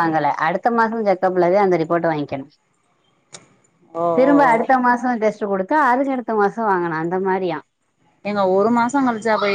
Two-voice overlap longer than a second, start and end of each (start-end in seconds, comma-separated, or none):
none